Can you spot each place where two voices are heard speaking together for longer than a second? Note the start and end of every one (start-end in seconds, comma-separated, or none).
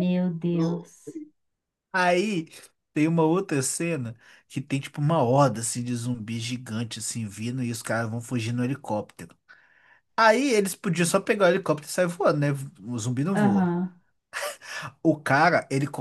none